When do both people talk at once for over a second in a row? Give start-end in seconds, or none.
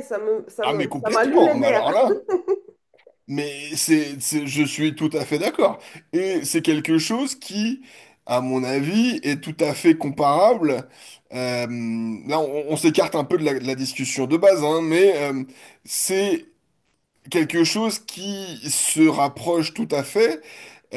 0.6-1.9